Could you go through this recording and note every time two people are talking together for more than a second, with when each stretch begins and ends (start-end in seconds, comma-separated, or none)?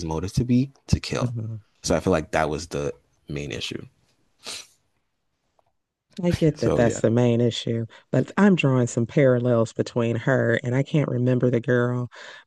none